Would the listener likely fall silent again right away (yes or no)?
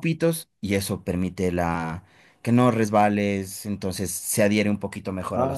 no